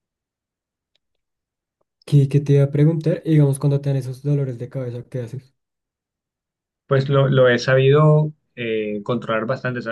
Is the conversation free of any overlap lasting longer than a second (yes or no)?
yes